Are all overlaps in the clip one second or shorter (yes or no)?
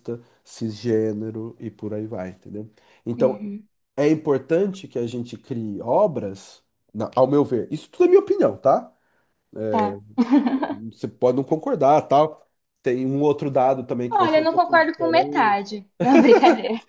no